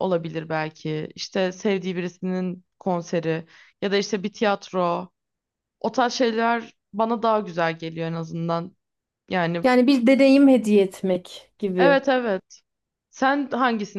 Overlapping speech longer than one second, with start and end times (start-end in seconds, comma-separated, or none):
none